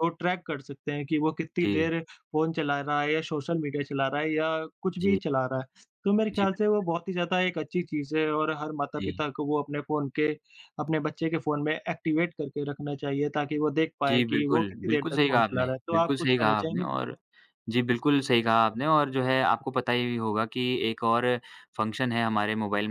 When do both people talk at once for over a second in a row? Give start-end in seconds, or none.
14.1-16.9